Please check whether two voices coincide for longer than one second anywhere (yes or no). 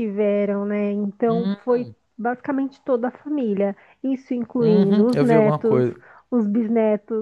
yes